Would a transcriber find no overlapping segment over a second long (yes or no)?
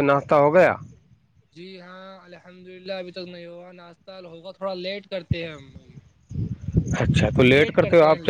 yes